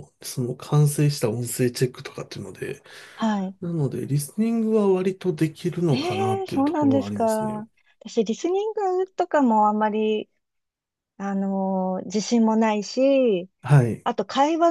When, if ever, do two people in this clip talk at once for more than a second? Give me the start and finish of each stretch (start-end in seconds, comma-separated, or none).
5.9-7.6